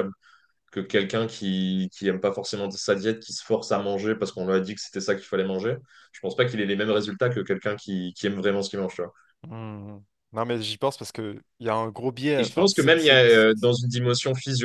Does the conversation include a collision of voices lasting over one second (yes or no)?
yes